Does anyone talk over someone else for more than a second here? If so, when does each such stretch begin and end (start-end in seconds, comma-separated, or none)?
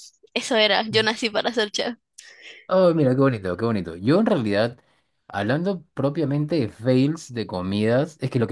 none